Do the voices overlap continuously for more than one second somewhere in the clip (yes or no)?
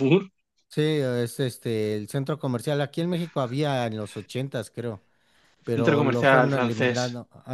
yes